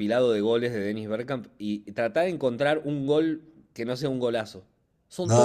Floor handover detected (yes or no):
yes